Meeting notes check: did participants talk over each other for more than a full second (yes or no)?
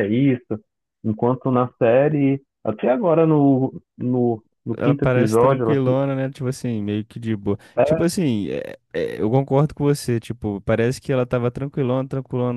yes